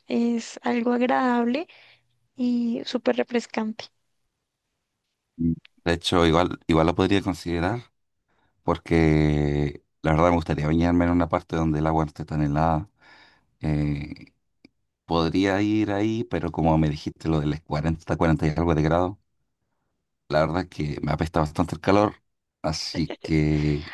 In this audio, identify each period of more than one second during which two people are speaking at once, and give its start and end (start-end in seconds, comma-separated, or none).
none